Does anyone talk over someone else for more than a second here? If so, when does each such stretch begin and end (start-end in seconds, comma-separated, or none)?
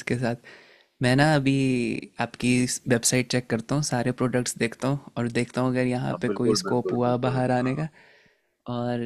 6.1-7.8